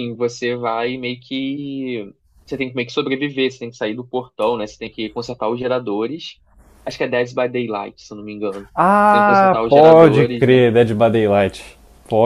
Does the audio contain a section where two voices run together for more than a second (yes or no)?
yes